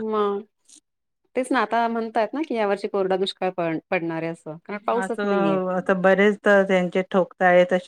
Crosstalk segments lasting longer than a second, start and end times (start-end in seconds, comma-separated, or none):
none